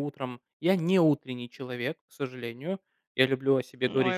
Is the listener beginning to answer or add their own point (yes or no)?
yes